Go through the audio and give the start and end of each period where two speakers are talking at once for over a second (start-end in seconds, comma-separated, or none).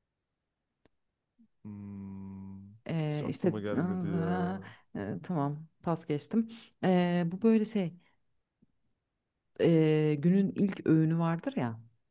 3.1-4.5